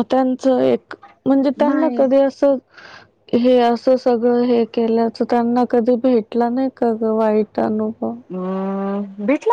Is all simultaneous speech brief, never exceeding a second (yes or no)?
yes